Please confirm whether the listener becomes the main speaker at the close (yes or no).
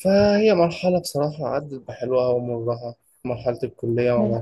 no